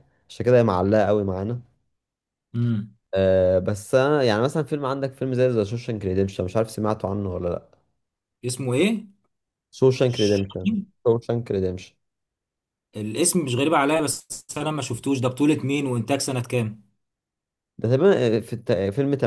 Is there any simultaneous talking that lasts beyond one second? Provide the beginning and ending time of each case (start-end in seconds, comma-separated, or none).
none